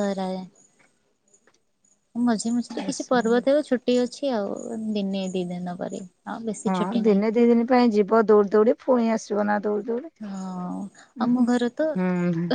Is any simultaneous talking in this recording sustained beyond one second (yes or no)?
no